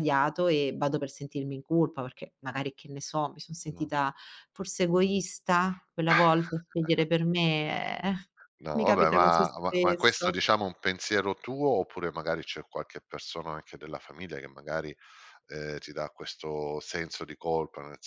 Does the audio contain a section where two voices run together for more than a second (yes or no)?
yes